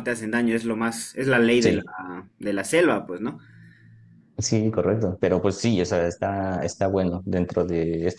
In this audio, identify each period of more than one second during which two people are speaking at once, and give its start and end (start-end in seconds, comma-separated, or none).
none